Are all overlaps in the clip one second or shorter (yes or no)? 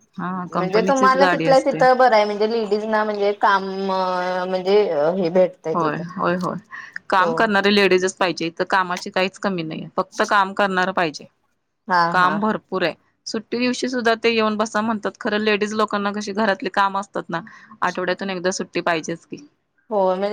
no